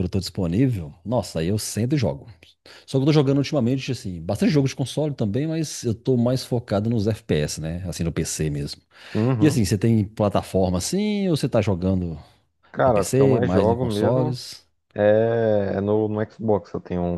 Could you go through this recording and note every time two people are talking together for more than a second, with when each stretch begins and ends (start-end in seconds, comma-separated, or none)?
12.8-14.4